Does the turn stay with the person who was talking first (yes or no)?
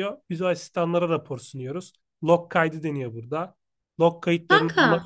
yes